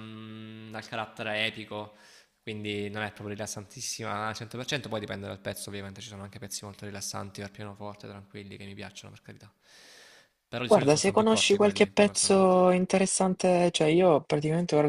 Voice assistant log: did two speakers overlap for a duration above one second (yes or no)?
yes